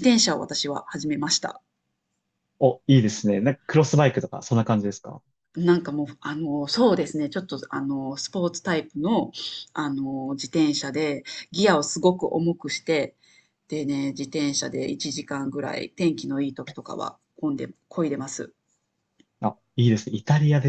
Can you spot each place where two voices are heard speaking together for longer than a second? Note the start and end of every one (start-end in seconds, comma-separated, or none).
none